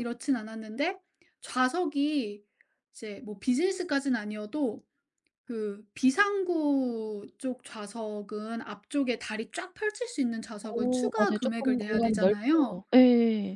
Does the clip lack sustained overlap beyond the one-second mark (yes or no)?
no